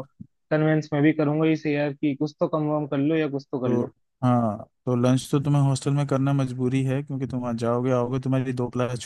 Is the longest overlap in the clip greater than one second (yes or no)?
no